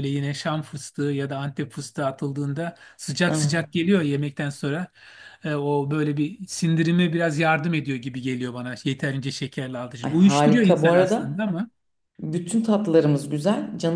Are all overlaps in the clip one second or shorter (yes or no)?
no